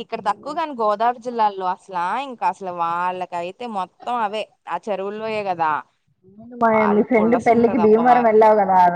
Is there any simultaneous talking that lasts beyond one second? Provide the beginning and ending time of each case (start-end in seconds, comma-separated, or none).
6.7-8.3